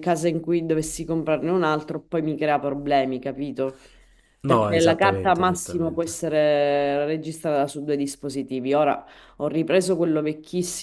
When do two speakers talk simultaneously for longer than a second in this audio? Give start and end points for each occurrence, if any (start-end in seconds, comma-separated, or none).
4.4-6.1